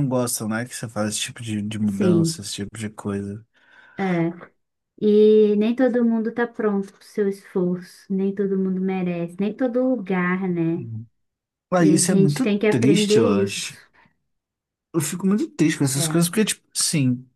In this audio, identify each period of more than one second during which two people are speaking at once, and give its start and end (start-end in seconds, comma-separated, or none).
11.8-13.7